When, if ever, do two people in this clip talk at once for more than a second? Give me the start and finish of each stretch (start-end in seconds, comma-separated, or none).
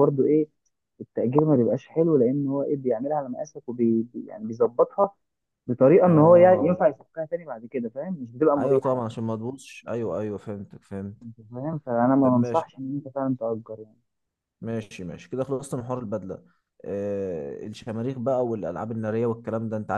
none